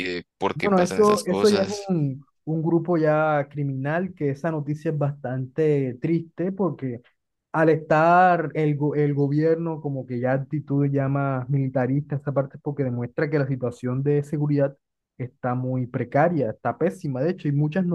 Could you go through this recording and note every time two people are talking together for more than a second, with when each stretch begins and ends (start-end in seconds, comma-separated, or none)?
0.5-1.9